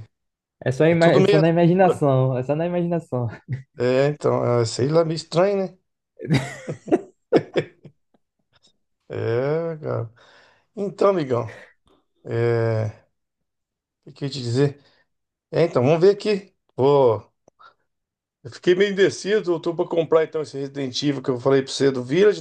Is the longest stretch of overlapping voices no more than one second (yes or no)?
no